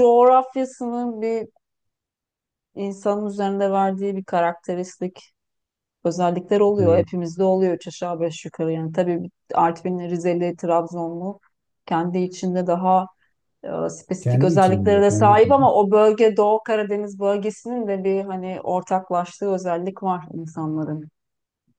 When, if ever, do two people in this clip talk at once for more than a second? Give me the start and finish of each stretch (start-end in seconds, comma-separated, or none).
14.2-15.6